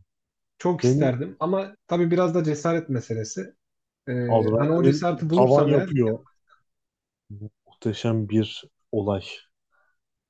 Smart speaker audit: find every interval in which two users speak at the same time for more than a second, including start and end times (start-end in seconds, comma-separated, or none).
4.3-5.9